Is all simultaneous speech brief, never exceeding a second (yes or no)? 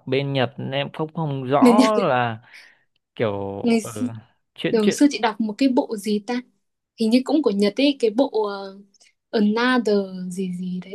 yes